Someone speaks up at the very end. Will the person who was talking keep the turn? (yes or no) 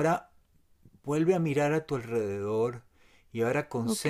yes